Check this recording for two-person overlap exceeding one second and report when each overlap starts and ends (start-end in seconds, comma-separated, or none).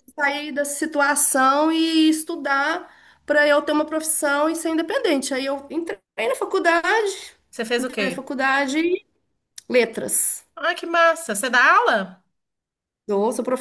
none